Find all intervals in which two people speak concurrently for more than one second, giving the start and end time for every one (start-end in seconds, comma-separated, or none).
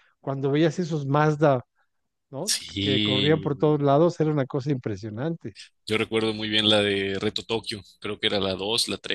2.4-3.9